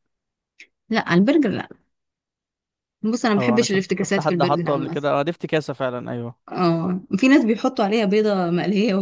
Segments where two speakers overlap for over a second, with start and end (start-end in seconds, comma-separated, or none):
3.4-5.0